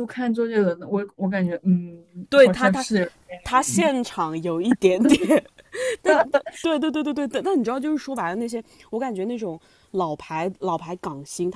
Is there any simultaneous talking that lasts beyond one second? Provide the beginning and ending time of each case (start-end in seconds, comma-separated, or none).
none